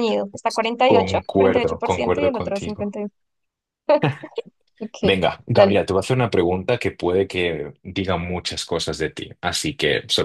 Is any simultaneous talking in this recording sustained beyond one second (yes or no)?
yes